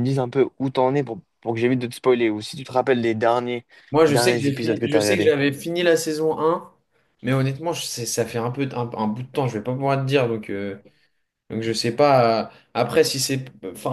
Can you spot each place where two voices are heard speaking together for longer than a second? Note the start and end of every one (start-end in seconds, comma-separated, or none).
4.1-5.3